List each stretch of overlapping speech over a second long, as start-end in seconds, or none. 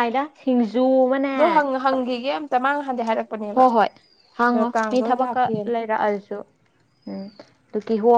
none